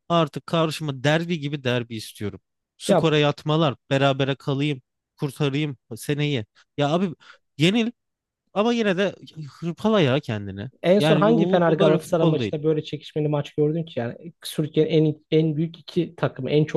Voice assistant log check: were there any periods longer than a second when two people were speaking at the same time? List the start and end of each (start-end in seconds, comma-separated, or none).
10.8-12.5